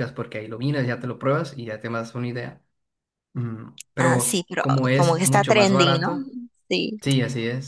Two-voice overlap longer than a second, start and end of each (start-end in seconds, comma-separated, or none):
4.0-6.1